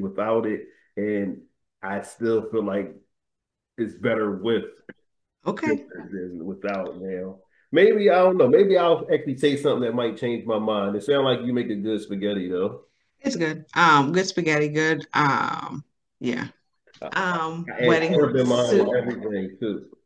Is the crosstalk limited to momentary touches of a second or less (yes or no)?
no